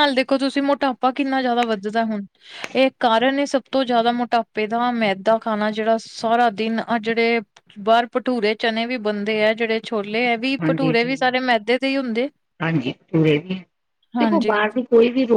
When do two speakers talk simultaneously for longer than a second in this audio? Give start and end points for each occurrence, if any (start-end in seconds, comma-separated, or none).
none